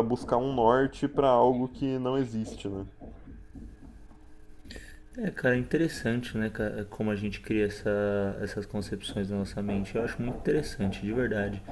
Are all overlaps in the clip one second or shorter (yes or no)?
yes